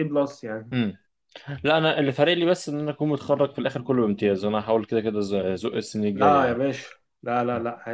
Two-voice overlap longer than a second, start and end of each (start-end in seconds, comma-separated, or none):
none